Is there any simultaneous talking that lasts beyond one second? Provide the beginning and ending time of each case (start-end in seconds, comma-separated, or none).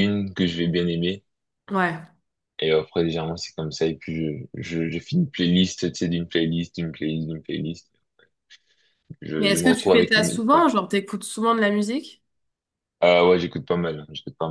9.4-10.6